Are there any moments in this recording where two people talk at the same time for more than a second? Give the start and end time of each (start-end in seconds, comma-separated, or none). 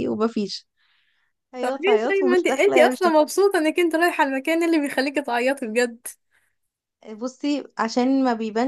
1.6-3.2